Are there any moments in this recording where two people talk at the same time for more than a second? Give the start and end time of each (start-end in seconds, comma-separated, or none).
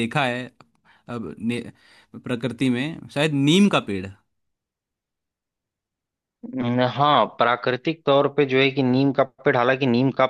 none